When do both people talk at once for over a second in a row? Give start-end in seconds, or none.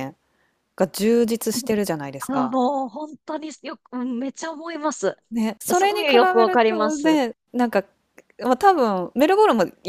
5.7-7.2